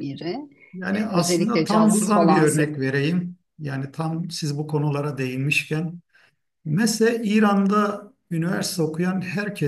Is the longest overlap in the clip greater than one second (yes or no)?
yes